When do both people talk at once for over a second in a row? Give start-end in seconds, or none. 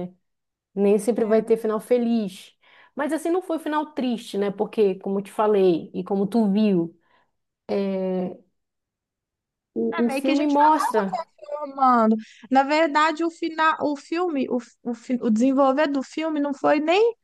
10.0-11.2